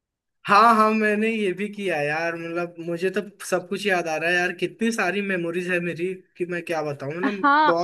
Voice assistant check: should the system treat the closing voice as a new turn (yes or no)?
yes